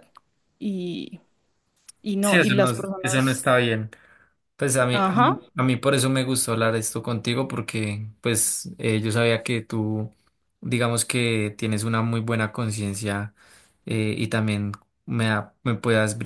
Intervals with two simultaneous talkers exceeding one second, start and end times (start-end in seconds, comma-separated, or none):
2.2-3.5